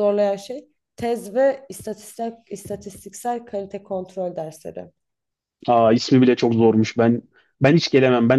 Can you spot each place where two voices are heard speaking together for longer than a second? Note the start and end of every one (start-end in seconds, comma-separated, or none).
none